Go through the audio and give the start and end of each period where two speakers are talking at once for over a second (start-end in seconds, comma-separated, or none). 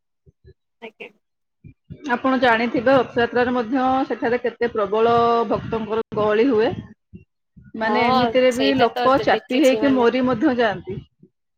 7.8-10.0